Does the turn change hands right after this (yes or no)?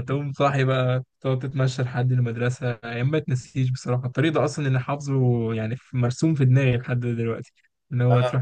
no